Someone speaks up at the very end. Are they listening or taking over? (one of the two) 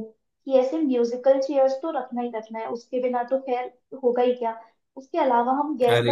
listening